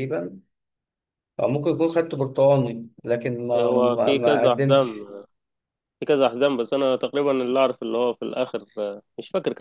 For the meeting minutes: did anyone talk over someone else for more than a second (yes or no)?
yes